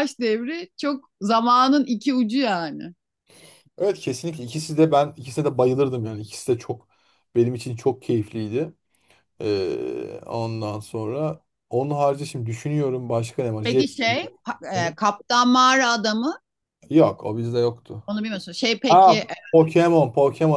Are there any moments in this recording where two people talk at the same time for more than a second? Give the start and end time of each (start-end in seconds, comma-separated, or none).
none